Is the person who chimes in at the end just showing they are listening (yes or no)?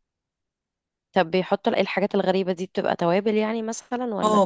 no